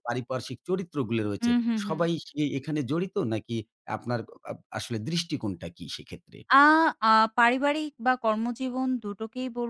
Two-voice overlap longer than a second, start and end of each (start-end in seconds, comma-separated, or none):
none